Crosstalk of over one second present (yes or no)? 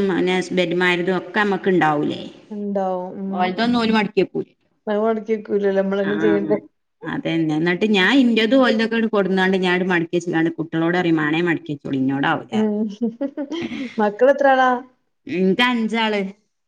no